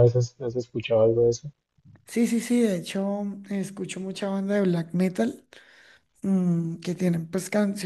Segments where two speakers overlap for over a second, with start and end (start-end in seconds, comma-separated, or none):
none